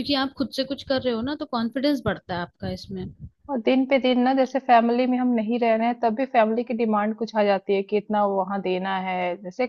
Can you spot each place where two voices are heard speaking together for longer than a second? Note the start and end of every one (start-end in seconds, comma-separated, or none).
none